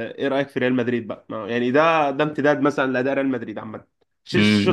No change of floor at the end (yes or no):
no